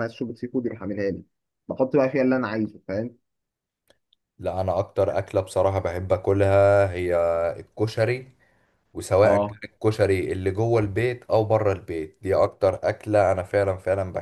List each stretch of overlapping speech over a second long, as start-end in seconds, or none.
none